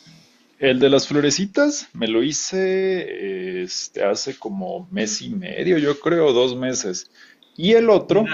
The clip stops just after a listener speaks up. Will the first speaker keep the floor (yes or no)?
no